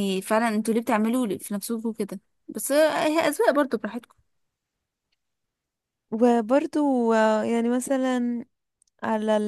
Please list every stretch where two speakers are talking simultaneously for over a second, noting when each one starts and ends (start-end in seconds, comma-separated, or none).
none